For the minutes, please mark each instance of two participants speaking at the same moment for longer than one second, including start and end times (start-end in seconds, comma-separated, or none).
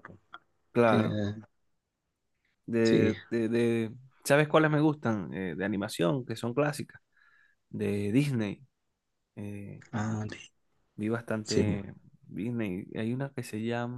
none